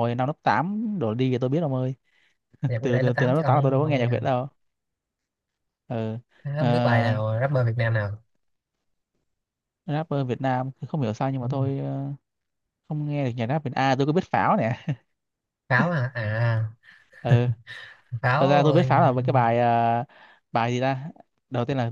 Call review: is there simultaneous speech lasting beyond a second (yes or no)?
yes